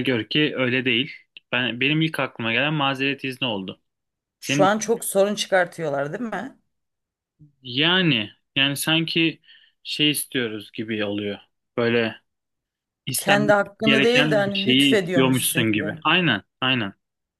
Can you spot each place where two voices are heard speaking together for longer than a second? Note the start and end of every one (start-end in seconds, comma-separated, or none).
13.2-15.9